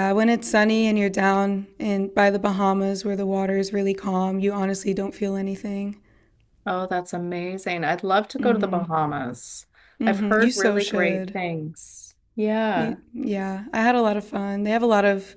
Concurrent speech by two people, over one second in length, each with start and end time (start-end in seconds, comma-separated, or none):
10.0-11.4